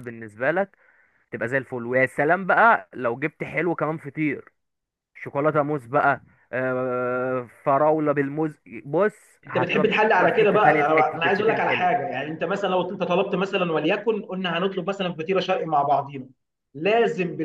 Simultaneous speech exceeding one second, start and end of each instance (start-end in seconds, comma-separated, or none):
9.4-11.9